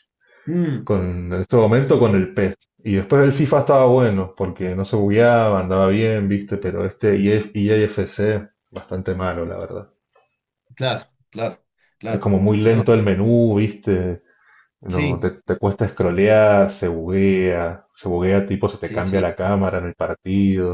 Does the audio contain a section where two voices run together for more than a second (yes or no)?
no